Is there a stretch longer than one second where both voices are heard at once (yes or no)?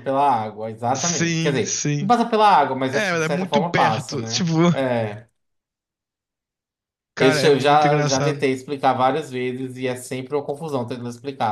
yes